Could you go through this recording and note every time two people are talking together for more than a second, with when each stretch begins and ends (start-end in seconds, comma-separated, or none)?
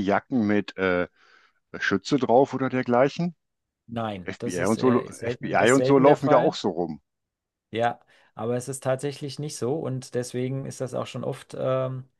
4.2-6.6